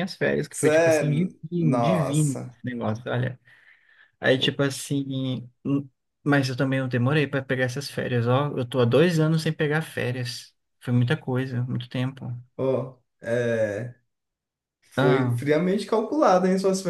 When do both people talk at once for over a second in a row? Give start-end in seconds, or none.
0.5-2.6